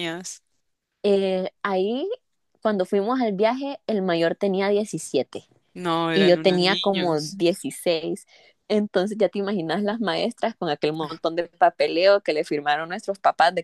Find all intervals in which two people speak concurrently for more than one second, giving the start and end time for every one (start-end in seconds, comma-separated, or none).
6.2-7.4